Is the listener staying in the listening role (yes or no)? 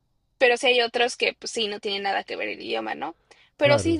yes